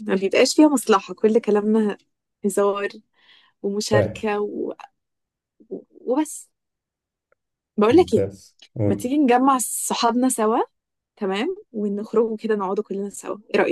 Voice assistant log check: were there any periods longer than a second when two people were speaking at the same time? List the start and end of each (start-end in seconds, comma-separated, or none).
none